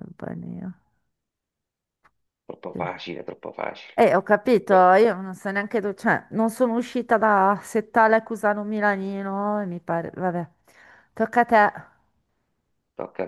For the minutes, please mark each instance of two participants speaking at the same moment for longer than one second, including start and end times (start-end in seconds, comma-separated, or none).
none